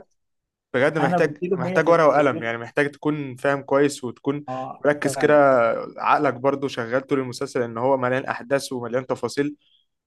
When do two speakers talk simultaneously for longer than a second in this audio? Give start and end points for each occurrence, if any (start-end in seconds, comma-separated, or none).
1.0-2.5